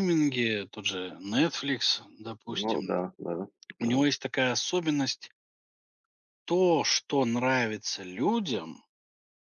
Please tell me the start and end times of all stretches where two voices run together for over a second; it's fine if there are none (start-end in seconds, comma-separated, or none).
none